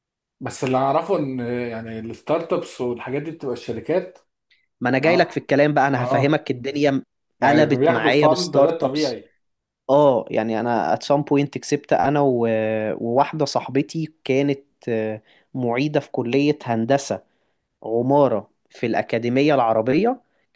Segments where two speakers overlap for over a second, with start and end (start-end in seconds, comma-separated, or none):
7.4-9.1